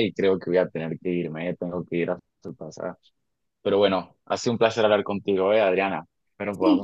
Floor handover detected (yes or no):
yes